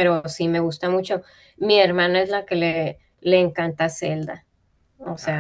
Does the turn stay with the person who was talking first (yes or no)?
no